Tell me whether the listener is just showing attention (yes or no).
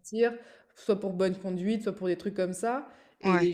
yes